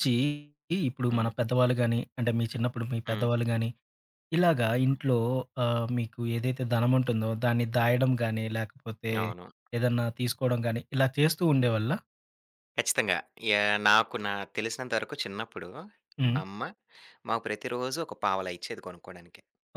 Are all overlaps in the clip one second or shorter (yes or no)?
yes